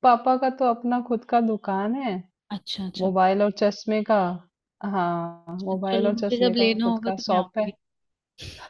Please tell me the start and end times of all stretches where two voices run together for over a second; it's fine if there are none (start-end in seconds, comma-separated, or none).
5.7-7.7